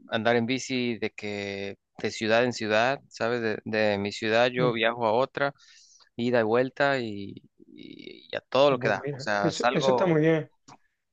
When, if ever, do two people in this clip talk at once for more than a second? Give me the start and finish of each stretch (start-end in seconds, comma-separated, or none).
8.7-10.2